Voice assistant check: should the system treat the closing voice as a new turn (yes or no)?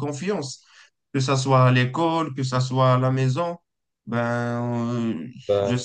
no